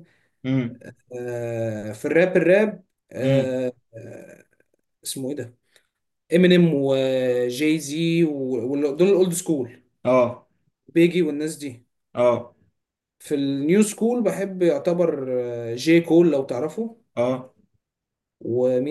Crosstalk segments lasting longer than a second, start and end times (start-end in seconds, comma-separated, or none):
none